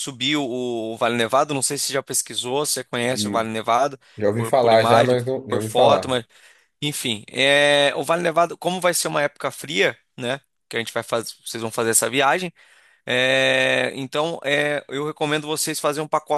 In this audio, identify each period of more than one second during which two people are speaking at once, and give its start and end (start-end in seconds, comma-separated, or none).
4.3-6.1